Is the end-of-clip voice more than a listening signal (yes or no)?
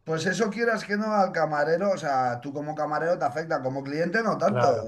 yes